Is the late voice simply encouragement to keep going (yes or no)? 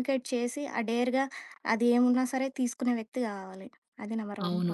no